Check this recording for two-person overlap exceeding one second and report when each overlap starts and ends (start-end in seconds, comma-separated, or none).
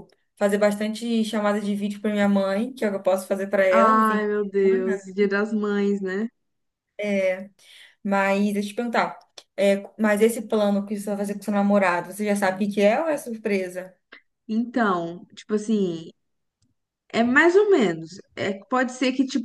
3.7-5.0